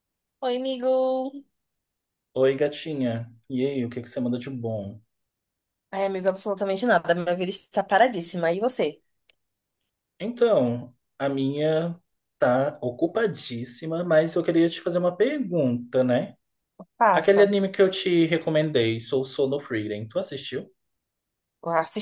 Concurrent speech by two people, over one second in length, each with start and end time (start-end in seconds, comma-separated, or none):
none